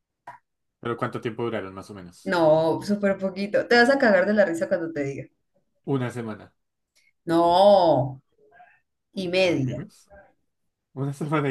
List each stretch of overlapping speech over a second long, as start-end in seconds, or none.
none